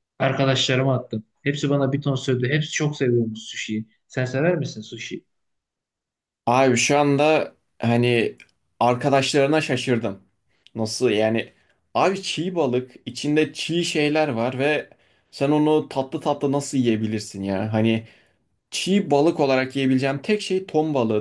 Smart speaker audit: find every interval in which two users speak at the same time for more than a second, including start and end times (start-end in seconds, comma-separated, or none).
none